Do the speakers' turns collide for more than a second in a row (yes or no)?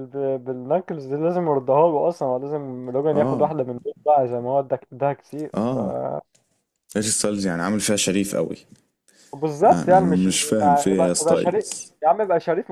yes